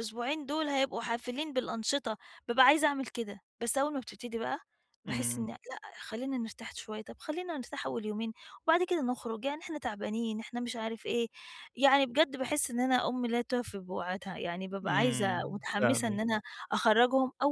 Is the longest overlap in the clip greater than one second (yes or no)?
yes